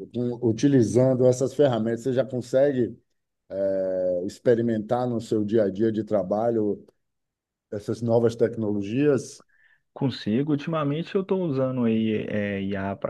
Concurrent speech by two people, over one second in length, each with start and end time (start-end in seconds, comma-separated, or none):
none